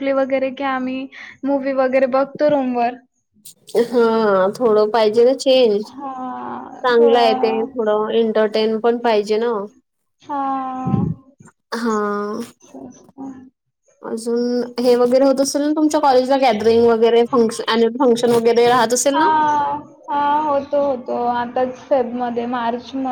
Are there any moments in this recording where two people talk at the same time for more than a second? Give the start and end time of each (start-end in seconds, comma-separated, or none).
5.9-7.6